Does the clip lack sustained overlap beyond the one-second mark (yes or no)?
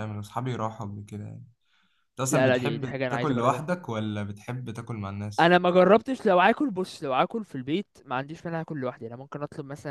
no